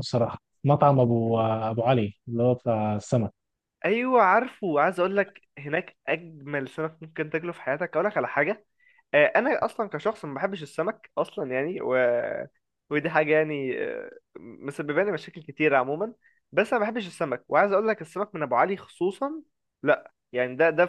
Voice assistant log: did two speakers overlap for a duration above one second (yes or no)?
no